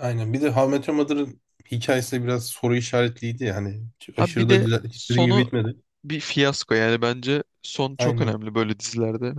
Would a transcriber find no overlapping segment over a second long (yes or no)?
no